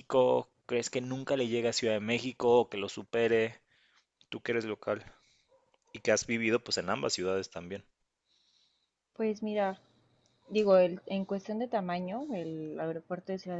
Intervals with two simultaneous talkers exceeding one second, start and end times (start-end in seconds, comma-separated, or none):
none